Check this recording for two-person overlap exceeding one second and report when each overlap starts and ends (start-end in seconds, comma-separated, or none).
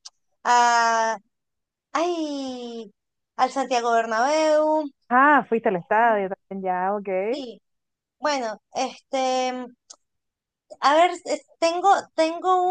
none